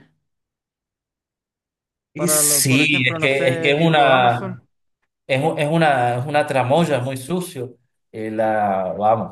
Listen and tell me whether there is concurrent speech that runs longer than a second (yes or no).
yes